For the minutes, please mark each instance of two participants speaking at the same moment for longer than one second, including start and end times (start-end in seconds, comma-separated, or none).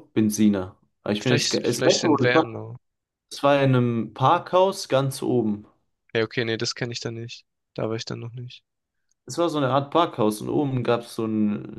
1.2-2.7